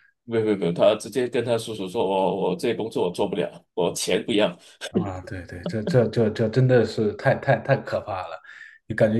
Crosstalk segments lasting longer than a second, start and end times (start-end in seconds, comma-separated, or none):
none